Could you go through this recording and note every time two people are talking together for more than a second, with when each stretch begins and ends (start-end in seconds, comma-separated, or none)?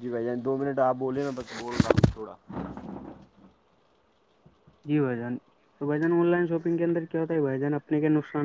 none